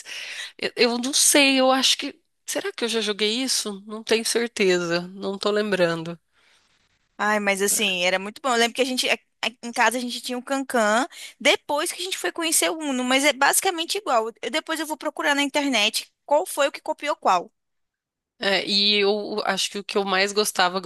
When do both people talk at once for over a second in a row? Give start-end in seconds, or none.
none